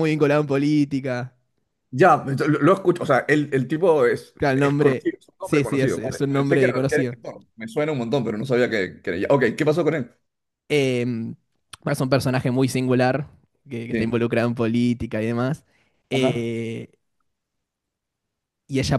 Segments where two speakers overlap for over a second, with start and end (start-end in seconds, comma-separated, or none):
4.4-7.2